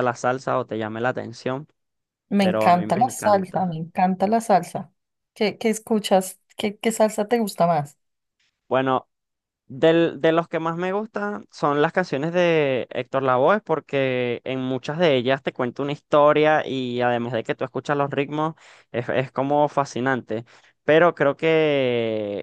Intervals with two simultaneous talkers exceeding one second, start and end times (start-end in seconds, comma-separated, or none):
2.4-3.8